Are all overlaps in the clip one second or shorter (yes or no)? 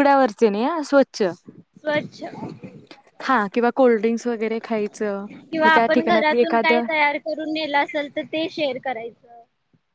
no